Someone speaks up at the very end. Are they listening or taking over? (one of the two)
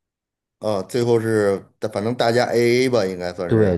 taking over